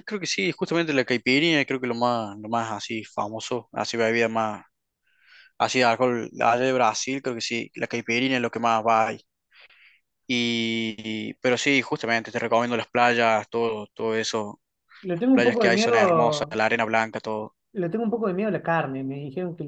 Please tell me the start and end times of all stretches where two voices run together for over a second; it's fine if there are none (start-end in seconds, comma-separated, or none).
15.1-16.5